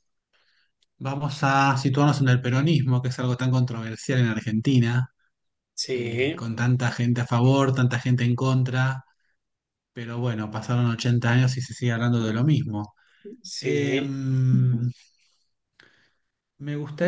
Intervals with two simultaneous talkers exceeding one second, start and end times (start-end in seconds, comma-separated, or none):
none